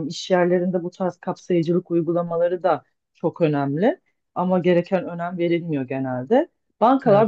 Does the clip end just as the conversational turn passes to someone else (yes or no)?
no